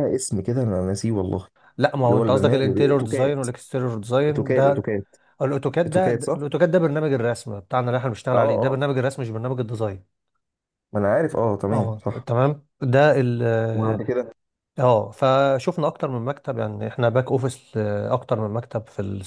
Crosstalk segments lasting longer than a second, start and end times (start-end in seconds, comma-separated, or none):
2.1-3.4